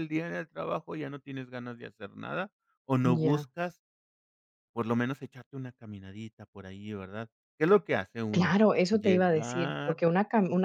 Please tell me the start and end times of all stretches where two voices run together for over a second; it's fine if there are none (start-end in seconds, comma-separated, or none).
8.3-10.0